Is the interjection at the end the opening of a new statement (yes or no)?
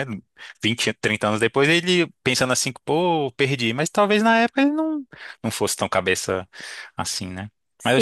yes